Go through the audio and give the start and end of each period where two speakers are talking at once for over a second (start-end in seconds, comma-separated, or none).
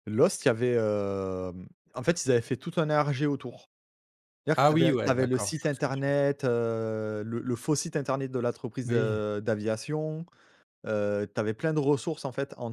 4.6-6.0